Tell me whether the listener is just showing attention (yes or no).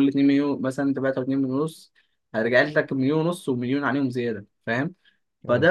yes